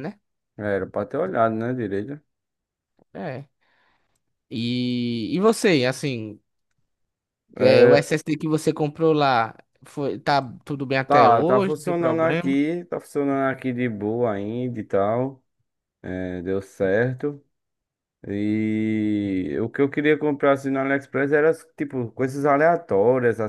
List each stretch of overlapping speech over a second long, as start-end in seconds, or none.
11.1-12.6